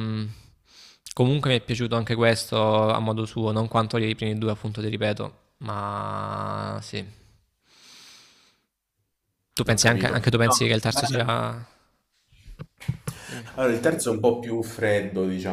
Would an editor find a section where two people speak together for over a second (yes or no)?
yes